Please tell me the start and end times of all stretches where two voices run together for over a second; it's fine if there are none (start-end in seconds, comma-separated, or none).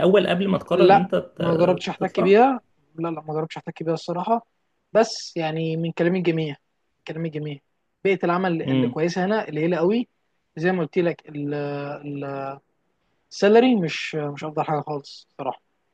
0.7-2.4